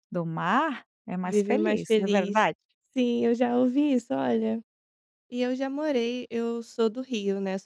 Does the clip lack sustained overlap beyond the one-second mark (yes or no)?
no